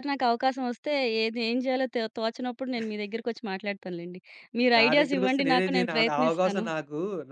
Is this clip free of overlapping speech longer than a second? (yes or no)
no